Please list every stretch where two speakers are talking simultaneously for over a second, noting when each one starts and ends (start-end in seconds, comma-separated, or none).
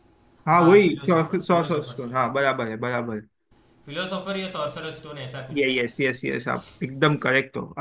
0.5-2.3